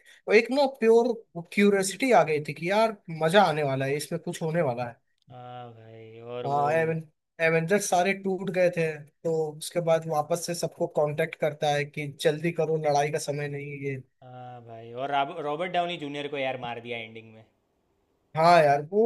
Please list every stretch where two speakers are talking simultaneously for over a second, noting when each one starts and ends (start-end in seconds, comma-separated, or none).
none